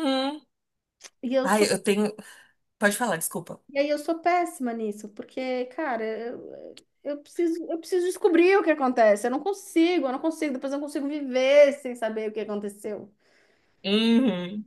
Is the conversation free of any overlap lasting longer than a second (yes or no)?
yes